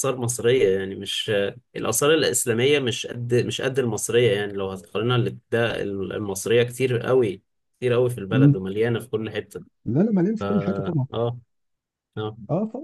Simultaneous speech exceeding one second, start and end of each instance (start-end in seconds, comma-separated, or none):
none